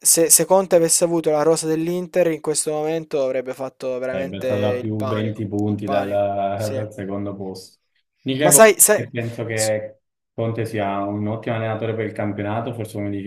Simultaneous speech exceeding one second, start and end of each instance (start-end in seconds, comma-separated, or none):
4.1-6.8